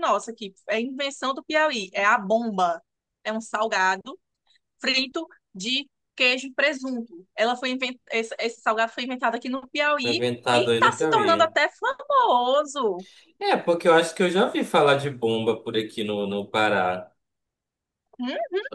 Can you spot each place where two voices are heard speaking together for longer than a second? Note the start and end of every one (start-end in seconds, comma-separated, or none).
10.0-11.6